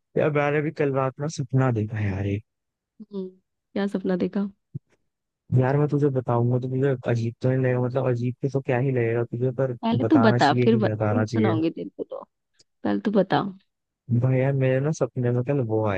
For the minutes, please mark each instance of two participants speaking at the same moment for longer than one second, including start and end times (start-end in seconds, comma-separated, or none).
9.8-11.6